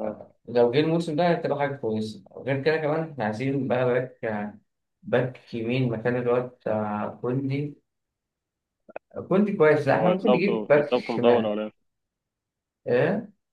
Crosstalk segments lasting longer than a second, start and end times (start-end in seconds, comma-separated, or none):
9.9-11.6